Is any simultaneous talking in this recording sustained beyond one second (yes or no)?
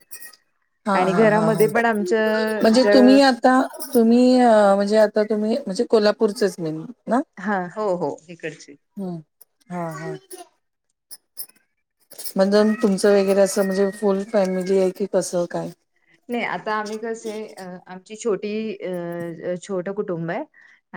yes